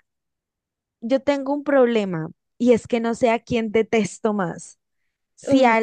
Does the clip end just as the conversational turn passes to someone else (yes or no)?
no